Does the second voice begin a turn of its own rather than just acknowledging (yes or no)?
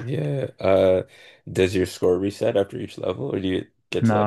yes